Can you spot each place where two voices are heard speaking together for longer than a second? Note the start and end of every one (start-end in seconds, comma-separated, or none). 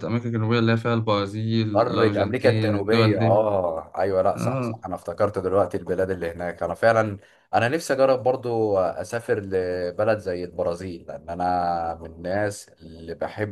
1.7-3.4